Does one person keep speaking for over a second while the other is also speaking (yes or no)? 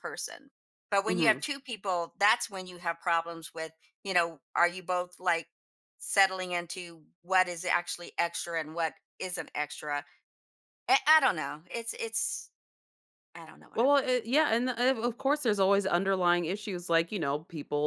no